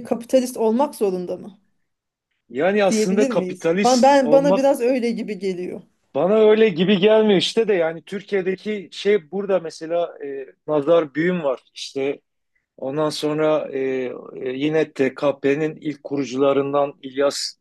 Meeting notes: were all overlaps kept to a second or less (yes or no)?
no